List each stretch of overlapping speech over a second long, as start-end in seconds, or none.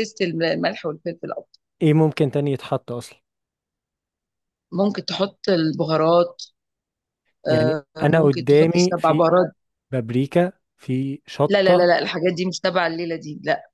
7.5-9.4